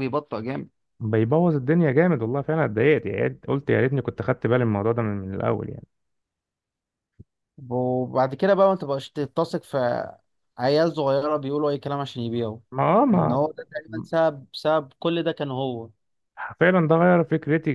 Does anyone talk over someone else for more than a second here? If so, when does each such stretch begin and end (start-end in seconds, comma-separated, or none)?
none